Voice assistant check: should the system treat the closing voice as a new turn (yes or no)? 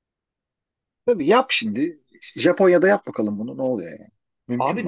yes